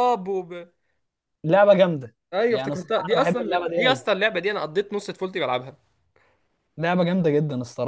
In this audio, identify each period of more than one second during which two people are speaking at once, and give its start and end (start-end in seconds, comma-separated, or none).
2.3-4.0